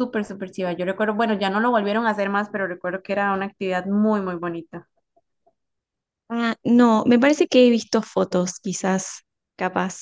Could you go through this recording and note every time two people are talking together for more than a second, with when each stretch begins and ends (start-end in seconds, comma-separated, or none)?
none